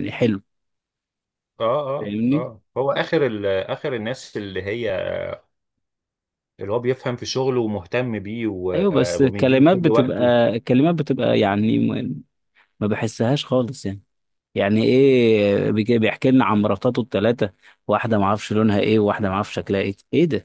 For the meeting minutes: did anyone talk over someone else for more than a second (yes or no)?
yes